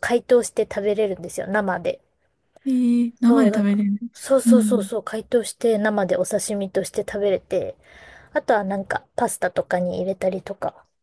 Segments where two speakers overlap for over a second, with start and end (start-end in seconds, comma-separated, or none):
3.3-4.9